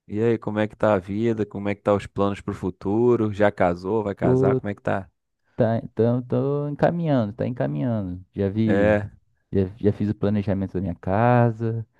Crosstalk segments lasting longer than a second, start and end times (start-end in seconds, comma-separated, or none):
none